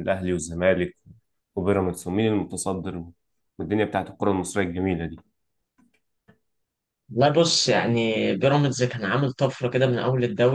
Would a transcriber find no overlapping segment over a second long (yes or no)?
yes